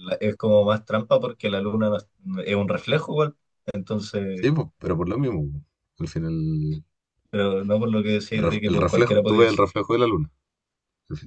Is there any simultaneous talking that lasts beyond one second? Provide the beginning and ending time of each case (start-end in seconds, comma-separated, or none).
8.3-9.6